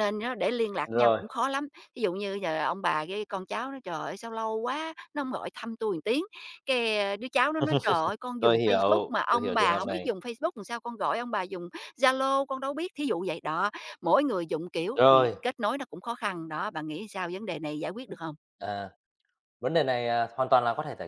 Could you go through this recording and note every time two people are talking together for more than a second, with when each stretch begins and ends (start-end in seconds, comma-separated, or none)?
8.4-10.1